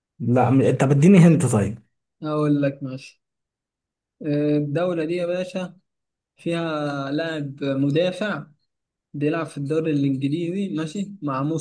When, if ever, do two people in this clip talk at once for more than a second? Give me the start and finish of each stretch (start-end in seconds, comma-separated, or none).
none